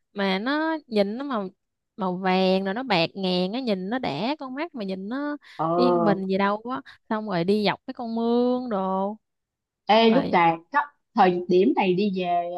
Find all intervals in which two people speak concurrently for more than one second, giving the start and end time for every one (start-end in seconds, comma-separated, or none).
none